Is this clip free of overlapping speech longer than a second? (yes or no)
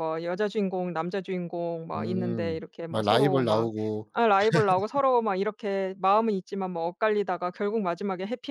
no